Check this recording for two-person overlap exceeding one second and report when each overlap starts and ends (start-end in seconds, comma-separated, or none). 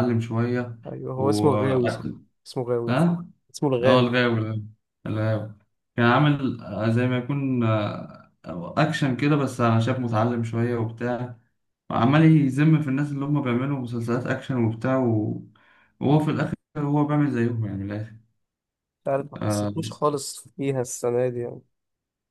none